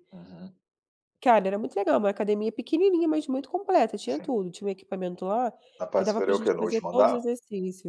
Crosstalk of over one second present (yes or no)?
yes